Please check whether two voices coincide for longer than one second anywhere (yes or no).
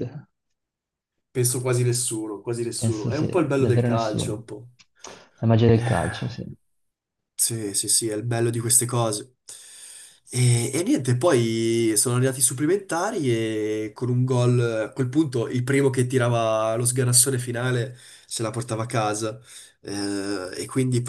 yes